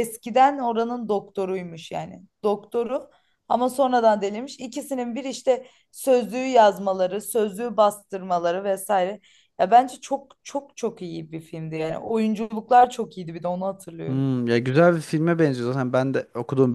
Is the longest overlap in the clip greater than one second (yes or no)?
no